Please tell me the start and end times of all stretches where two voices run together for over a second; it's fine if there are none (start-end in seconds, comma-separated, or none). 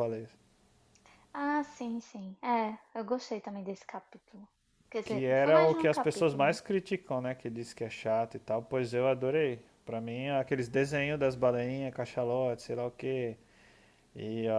5.0-6.6